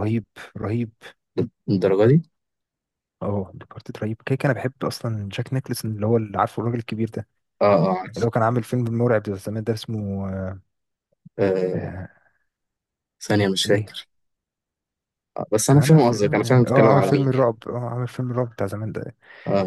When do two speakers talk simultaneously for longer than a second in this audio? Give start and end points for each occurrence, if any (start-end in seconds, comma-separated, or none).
15.7-17.5